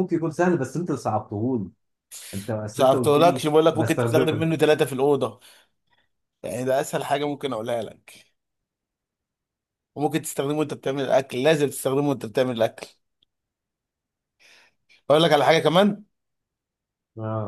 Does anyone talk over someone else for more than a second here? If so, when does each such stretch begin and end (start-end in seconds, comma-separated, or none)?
2.7-4.5